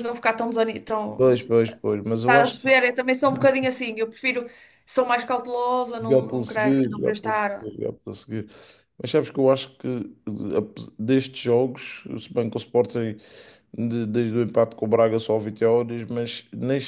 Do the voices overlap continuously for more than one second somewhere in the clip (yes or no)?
yes